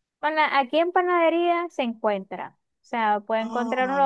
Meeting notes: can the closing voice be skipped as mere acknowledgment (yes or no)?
yes